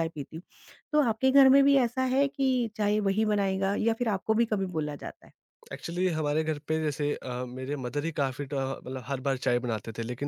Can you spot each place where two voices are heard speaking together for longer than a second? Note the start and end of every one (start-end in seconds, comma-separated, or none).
none